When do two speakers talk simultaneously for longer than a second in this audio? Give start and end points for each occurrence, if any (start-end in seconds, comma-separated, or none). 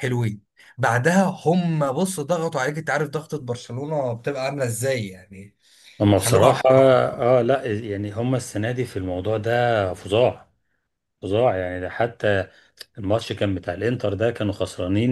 none